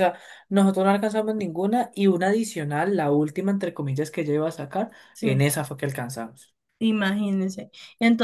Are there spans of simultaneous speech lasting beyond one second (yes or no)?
no